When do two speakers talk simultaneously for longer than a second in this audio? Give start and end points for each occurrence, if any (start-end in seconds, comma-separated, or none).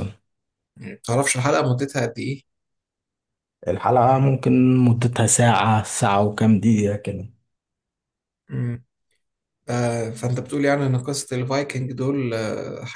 none